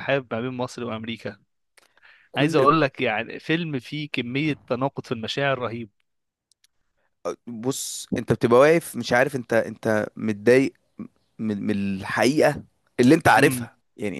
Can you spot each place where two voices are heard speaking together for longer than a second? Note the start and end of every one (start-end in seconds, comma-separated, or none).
none